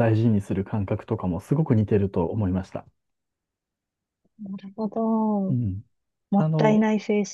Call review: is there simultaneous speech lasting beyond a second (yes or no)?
no